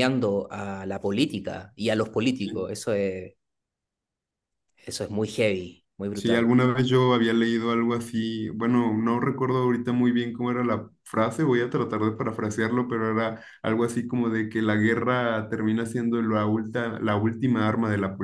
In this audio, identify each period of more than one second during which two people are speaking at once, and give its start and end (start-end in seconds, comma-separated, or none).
none